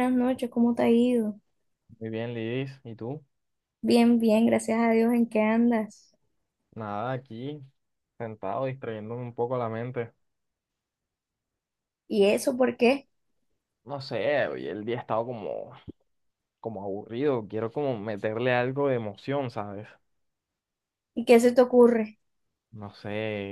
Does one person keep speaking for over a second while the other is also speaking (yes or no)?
no